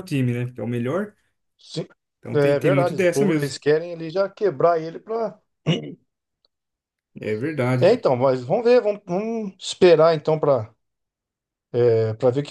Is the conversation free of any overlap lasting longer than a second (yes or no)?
no